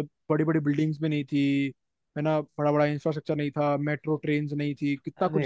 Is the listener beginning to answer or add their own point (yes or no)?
yes